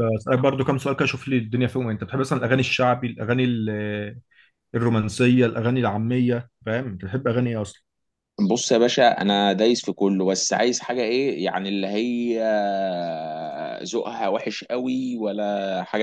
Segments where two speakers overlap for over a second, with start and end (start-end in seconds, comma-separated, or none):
none